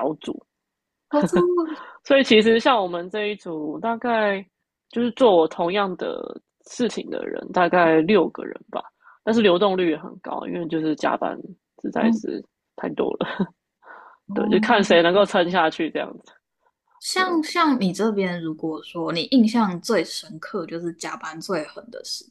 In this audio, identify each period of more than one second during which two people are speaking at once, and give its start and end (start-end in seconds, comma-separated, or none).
none